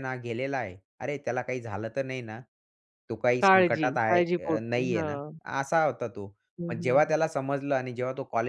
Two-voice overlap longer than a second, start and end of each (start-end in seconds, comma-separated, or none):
3.4-5.2